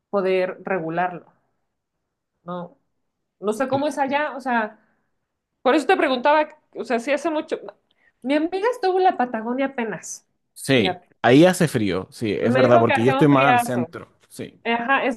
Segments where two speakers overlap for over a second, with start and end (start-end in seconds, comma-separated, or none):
12.4-13.9